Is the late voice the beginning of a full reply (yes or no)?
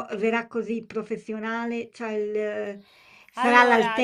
no